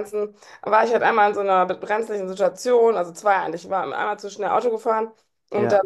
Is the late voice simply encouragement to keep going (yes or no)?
yes